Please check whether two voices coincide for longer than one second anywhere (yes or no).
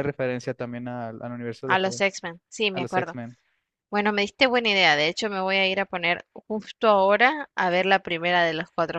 no